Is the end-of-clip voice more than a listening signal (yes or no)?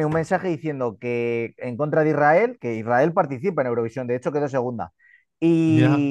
no